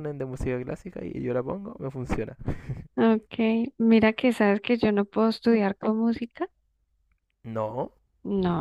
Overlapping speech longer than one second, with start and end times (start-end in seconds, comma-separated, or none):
none